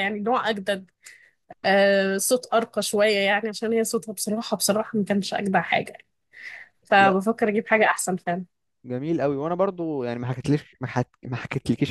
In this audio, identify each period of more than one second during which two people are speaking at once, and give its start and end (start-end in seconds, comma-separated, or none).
none